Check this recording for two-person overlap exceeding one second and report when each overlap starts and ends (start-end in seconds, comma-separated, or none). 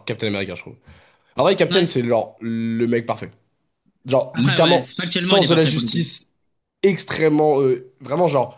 4.3-6.1